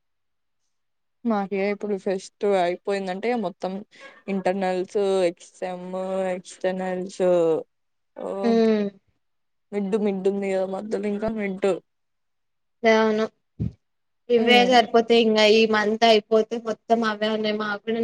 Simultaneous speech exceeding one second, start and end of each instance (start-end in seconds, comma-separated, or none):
none